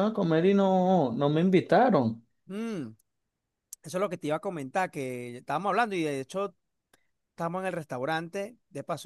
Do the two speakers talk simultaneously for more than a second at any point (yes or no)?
no